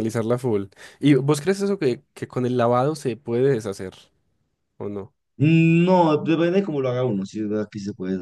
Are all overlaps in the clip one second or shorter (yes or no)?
yes